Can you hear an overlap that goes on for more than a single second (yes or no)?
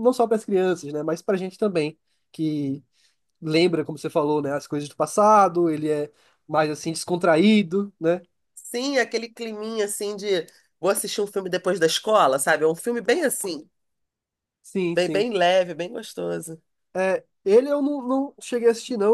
no